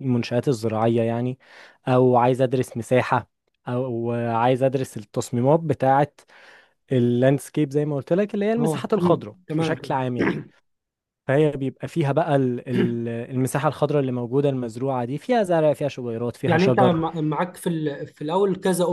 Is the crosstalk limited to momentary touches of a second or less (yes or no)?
no